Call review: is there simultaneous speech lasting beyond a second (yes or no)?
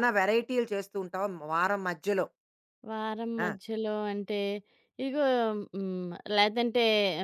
no